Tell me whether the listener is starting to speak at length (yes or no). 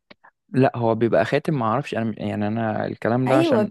yes